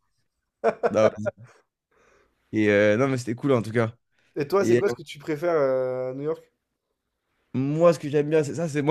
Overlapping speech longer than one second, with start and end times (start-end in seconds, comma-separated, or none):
none